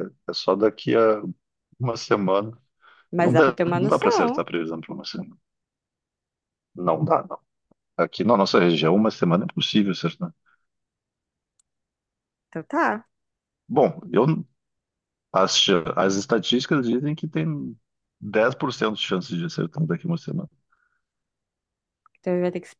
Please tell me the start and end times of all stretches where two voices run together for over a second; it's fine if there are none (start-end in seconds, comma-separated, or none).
3.2-4.4